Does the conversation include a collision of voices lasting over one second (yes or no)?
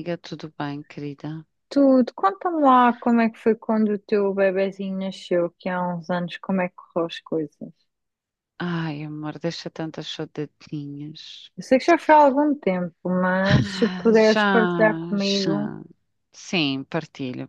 yes